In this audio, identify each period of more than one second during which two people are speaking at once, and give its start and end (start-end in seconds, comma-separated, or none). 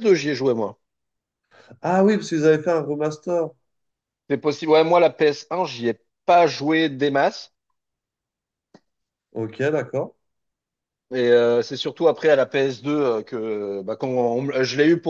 none